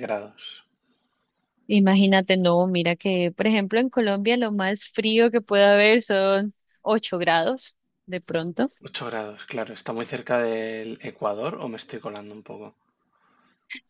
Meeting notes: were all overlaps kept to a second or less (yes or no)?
yes